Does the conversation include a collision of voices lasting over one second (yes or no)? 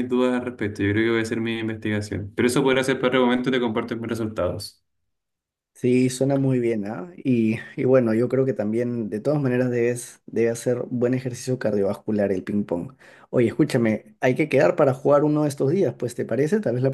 no